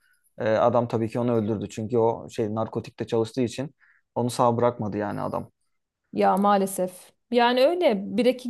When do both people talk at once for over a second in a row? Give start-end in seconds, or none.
none